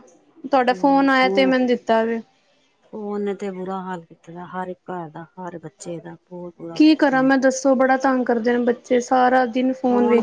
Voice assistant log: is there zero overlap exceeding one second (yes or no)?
yes